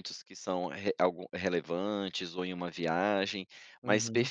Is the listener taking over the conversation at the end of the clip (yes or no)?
no